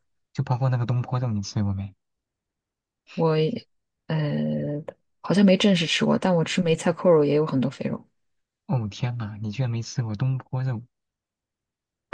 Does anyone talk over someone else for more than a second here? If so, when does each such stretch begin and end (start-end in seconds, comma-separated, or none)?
none